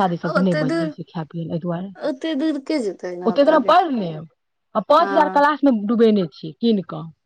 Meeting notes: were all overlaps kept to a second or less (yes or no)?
yes